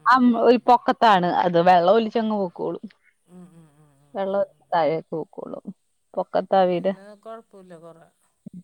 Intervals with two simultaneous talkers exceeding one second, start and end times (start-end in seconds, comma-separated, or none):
none